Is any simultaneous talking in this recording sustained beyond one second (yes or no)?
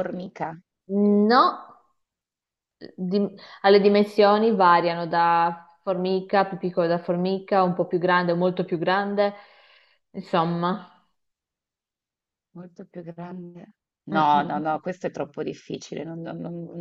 no